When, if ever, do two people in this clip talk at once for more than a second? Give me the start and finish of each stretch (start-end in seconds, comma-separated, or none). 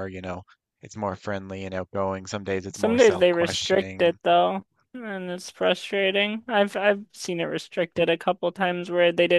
2.7-4.2